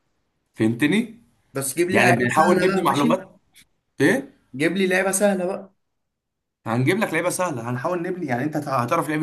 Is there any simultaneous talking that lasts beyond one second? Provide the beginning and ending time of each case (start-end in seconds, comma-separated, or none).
1.9-3.2